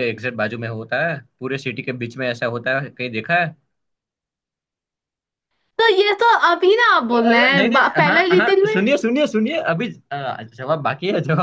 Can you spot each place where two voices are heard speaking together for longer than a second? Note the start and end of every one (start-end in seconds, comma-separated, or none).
7.1-8.8